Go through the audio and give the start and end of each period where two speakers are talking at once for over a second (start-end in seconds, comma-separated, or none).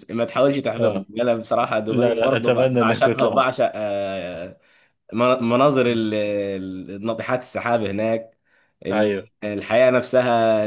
1.9-3.4